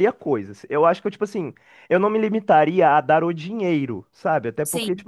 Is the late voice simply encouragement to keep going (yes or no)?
yes